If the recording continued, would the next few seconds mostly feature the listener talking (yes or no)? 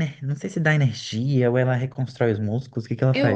yes